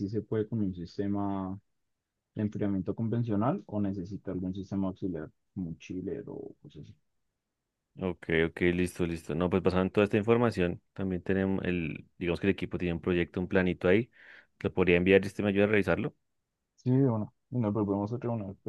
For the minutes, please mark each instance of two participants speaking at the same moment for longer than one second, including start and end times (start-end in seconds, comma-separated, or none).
none